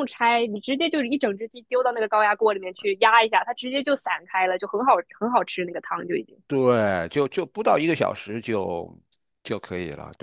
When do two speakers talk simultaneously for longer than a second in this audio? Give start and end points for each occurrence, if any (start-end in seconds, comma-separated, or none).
none